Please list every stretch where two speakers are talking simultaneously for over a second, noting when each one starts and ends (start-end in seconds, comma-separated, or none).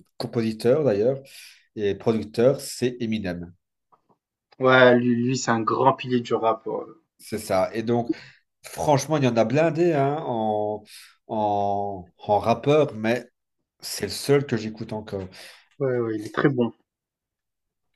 none